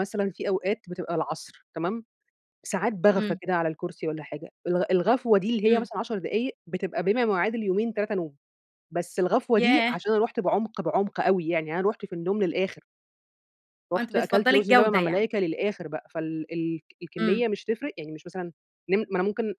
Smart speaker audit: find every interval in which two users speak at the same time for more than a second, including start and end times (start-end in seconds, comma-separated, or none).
14.0-15.3